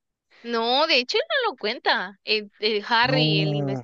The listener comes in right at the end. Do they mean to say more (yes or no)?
no